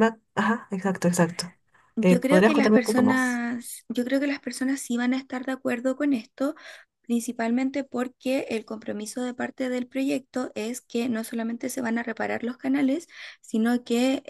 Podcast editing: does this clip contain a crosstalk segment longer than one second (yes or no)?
yes